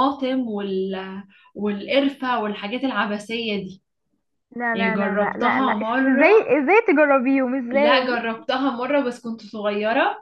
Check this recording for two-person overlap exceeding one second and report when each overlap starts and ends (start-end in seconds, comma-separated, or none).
4.7-6.5